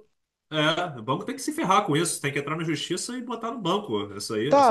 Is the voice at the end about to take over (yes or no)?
yes